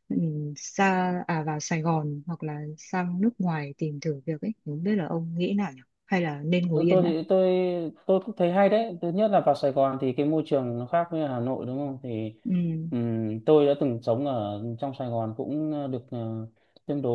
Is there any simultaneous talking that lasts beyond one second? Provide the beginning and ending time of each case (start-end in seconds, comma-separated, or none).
none